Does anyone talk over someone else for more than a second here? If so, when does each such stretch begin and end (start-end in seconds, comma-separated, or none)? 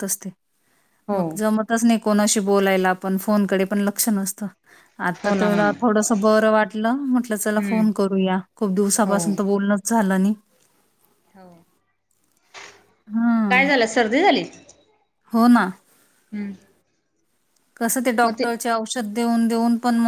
none